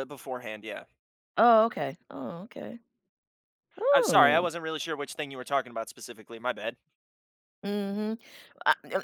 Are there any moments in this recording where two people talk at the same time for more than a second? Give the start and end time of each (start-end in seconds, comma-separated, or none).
none